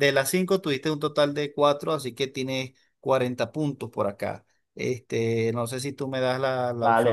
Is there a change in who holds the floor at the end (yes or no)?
yes